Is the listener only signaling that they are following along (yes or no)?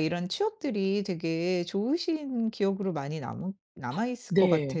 no